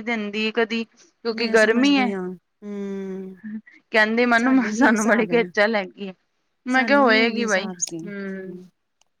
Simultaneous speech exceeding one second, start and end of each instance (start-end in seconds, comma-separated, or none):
6.8-8.0